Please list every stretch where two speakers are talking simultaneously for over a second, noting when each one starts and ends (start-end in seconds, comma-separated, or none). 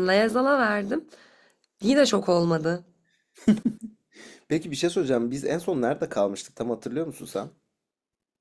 none